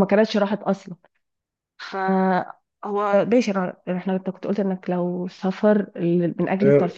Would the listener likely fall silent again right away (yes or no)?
no